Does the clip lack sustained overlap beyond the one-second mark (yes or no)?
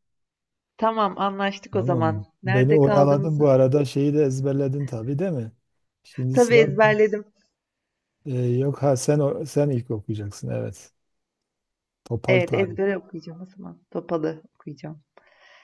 no